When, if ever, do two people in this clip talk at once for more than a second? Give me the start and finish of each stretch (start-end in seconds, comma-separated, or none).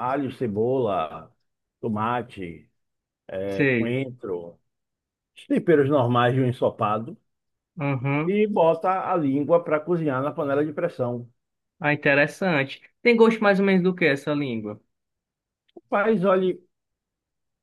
none